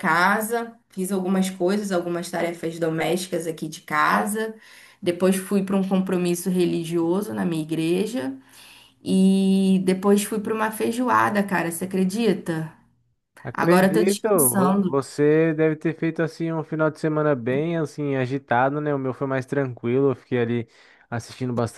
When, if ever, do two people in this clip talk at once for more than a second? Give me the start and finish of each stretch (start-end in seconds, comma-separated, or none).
13.5-15.0